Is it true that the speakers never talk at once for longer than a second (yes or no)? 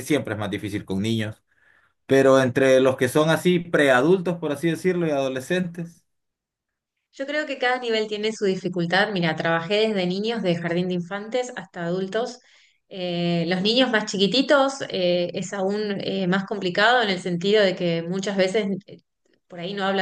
yes